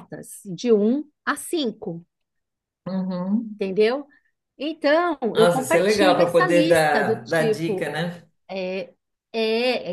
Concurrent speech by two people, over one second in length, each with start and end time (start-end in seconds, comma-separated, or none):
5.3-7.9